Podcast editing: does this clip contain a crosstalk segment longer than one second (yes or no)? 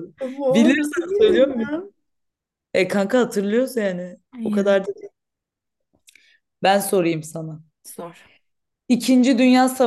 yes